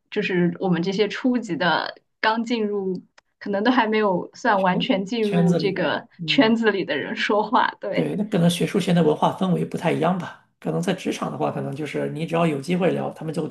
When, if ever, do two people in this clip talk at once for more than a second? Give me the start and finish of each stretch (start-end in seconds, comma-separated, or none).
4.6-6.6